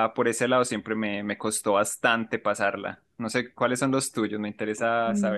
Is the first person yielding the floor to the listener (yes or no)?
yes